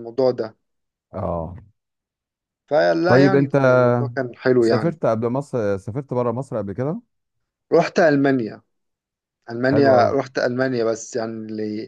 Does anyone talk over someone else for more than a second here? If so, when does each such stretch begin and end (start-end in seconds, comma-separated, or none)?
none